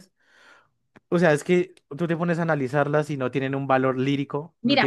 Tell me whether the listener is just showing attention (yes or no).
no